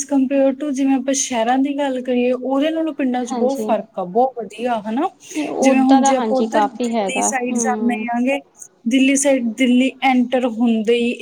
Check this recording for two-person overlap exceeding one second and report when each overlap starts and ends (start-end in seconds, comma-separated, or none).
5.7-8.0